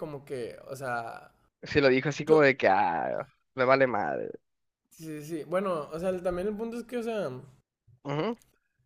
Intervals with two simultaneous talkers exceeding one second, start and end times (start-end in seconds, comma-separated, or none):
none